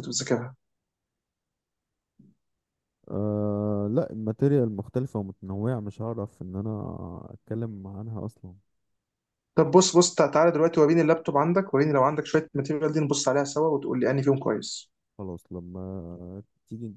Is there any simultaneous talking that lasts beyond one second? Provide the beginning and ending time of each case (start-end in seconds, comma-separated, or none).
none